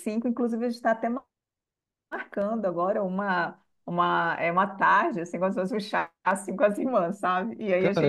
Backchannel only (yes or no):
no